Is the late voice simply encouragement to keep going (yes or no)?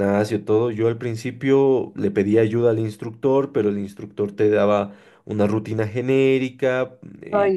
yes